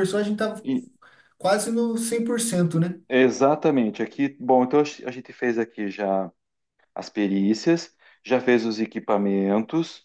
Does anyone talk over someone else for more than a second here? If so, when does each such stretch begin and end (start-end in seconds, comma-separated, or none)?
none